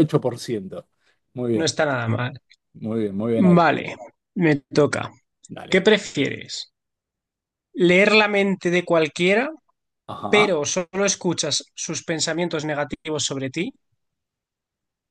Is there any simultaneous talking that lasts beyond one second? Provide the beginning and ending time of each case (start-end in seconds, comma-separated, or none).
none